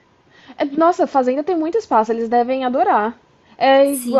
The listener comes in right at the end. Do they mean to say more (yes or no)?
yes